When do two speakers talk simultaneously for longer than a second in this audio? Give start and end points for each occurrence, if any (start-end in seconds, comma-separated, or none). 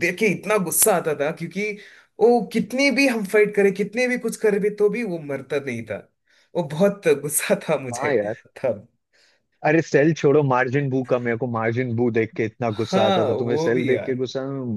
12.8-14.2